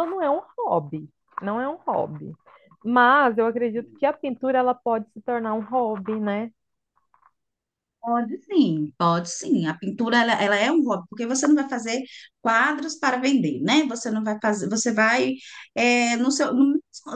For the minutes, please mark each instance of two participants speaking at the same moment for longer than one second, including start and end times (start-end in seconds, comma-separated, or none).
none